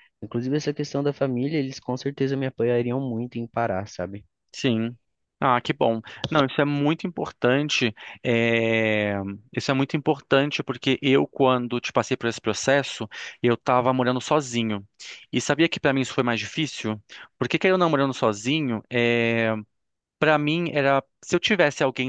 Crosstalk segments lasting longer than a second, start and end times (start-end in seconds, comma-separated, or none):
none